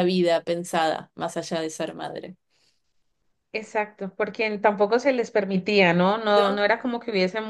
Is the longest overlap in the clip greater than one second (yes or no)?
no